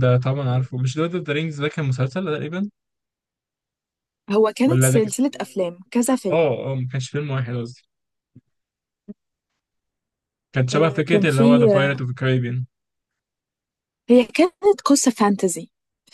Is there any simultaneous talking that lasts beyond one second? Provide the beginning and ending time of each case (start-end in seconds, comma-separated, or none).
10.7-12.1